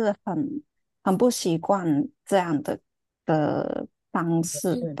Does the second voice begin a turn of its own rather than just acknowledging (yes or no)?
yes